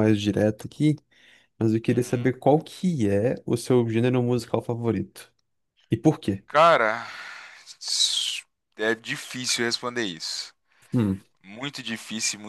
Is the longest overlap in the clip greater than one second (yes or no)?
no